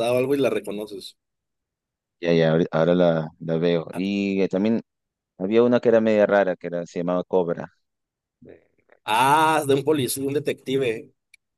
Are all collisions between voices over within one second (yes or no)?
yes